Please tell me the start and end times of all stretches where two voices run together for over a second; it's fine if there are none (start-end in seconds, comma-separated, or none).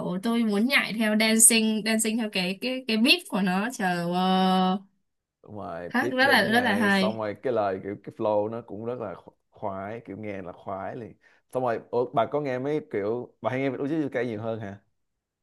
5.9-7.2